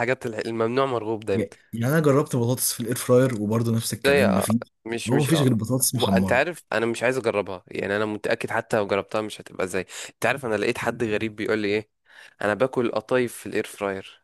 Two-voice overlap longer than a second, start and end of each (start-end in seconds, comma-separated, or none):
5.1-6.5